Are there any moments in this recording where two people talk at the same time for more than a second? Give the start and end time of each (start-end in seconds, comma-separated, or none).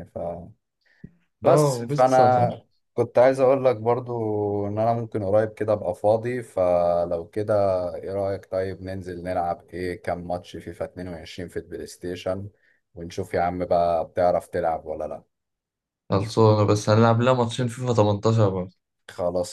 1.4-2.6